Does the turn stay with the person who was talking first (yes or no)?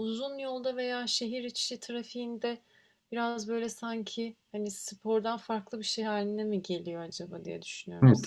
no